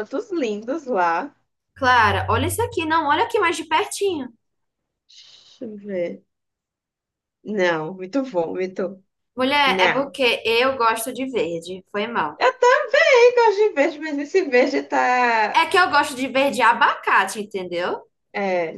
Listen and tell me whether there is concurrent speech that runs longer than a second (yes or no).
no